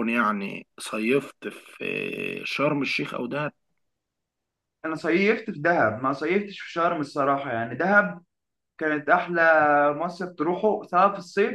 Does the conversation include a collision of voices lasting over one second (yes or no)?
no